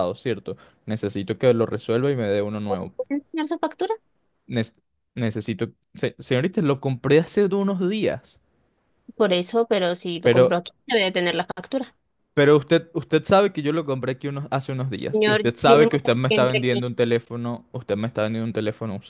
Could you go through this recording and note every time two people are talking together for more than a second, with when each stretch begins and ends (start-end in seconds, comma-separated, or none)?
15.1-16.9